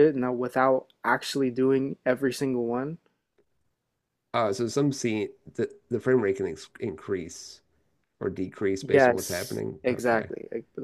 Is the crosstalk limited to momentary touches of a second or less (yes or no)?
no